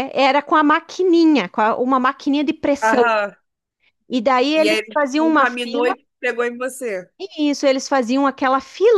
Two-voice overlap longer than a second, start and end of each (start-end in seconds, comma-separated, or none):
4.5-6.0